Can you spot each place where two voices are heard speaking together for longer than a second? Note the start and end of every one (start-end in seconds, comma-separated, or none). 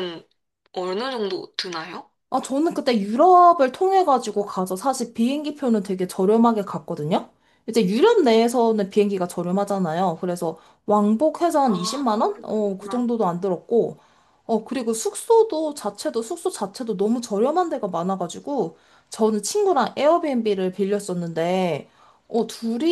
11.6-13.1